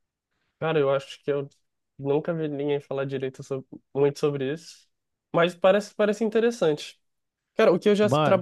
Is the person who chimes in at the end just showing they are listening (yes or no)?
yes